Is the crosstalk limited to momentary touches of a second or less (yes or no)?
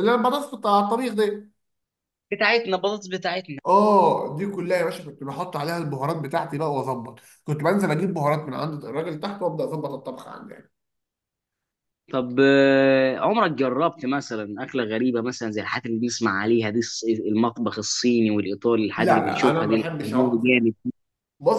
no